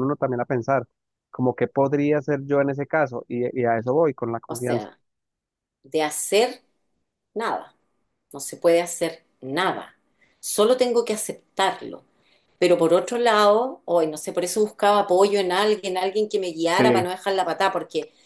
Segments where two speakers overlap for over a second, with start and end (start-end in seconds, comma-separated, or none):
none